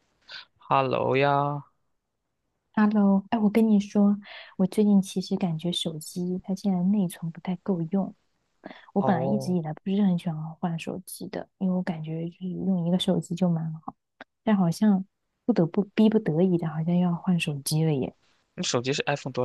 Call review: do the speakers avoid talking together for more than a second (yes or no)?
yes